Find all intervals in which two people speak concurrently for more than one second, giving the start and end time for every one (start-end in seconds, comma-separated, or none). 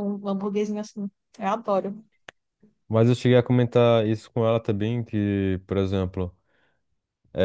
none